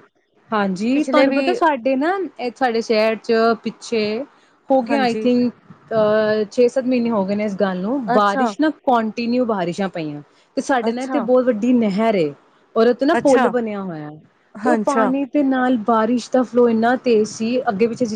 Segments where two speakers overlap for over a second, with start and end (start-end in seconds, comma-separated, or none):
none